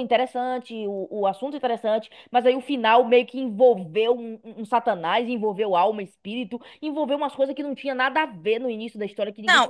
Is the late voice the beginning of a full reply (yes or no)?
yes